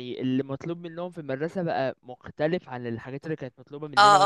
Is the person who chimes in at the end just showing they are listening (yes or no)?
no